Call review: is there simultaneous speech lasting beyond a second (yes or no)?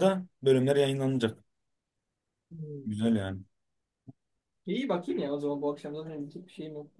no